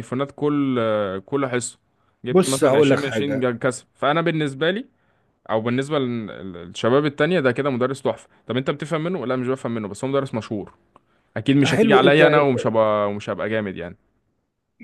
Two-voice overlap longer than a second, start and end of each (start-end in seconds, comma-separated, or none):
2.3-3.5